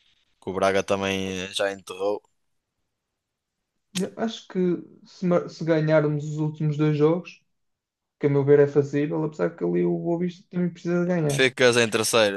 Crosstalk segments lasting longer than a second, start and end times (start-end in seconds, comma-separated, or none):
none